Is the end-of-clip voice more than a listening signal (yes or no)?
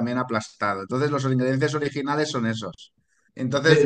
no